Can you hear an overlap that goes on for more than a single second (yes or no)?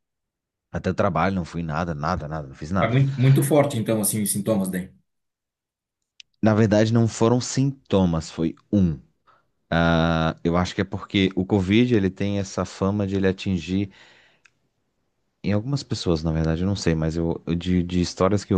no